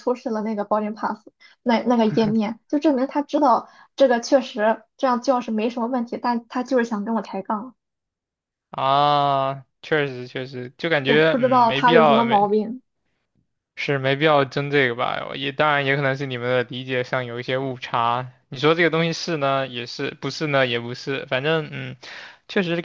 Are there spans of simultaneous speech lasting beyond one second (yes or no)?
yes